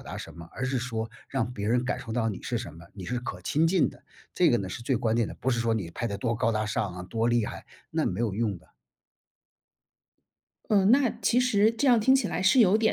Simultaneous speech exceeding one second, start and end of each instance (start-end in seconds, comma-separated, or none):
none